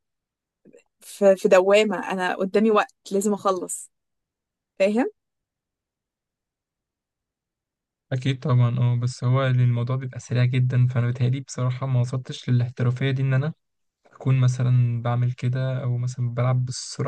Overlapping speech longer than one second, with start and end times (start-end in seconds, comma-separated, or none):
none